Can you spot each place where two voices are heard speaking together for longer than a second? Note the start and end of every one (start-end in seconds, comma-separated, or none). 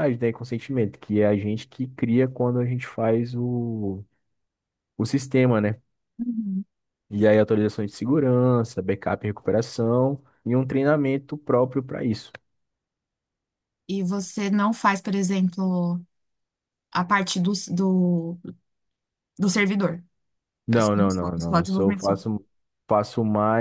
20.7-22.0